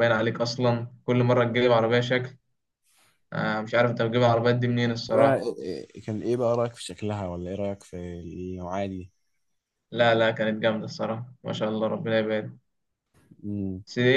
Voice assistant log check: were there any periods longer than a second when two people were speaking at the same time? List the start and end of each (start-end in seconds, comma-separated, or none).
none